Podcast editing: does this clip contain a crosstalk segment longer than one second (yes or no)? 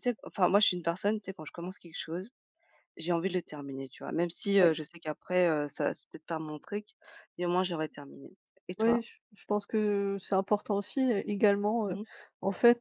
no